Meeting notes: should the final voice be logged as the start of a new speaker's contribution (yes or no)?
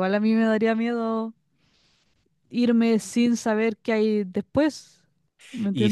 yes